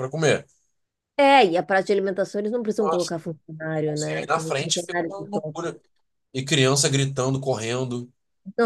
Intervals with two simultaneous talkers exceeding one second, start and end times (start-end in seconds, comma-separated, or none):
3.9-5.8